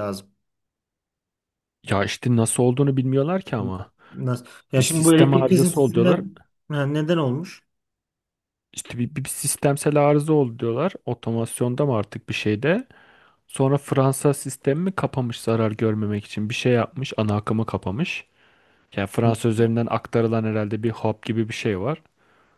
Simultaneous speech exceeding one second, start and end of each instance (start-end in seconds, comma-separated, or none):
4.8-6.2